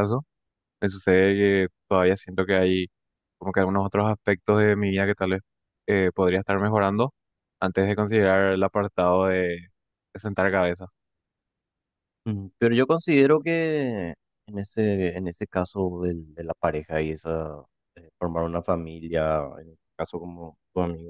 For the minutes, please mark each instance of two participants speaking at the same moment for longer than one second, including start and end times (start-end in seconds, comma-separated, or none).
none